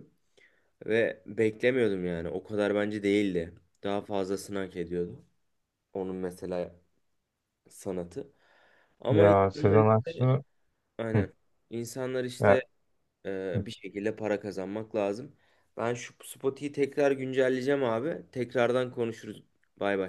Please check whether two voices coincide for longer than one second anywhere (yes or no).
yes